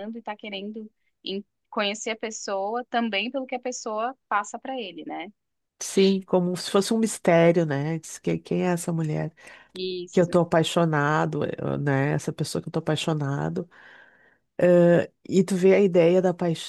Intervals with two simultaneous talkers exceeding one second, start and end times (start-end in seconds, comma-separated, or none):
none